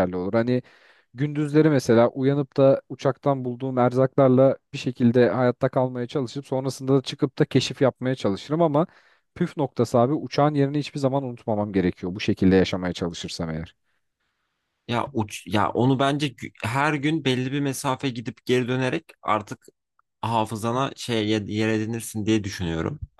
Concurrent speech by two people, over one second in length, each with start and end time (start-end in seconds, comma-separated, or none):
none